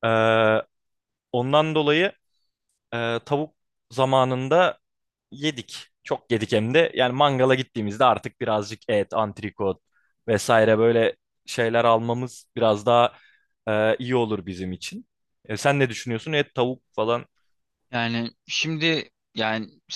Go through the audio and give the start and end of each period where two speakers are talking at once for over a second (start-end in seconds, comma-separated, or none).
none